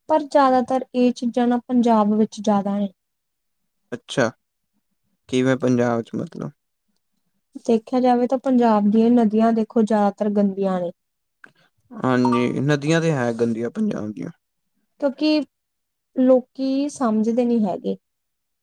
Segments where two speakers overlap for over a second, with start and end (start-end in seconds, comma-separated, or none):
none